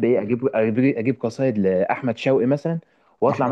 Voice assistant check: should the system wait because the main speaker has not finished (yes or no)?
yes